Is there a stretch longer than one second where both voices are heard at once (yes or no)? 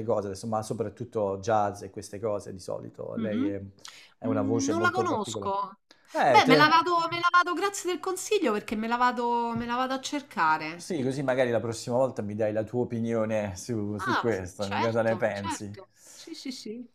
yes